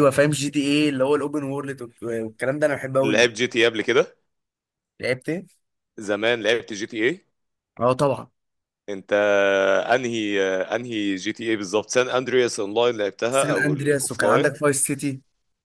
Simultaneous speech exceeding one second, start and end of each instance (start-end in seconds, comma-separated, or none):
13.3-14.5